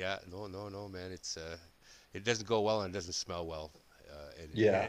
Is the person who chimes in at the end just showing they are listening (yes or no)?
yes